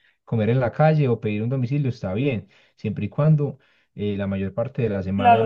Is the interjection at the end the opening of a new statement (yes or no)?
yes